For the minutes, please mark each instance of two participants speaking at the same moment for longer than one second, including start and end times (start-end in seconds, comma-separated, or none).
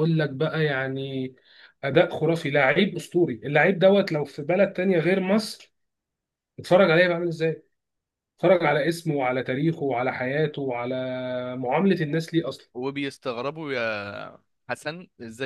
none